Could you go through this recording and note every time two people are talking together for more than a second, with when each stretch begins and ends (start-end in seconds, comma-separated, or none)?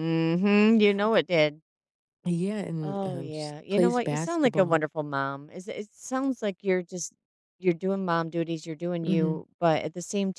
2.8-4.8